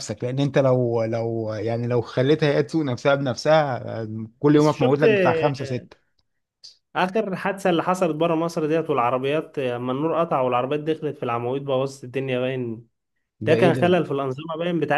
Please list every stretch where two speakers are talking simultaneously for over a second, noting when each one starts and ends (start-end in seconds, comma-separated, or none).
4.5-5.9